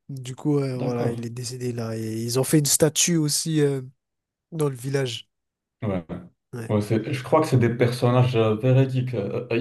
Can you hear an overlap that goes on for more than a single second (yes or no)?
no